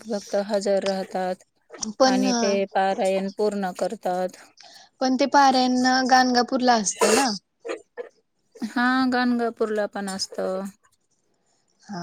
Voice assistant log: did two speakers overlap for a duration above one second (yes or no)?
no